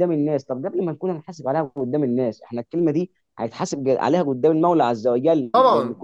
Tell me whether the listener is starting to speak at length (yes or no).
no